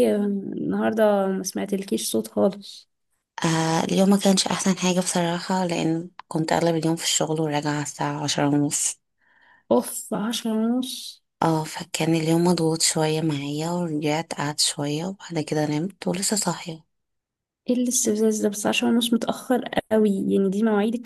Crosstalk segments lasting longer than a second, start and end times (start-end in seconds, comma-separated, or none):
none